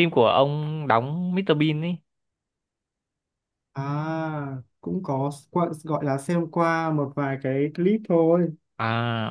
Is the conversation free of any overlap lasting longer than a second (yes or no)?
yes